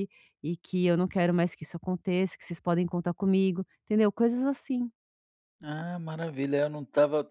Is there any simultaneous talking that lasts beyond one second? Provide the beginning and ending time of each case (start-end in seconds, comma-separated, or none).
none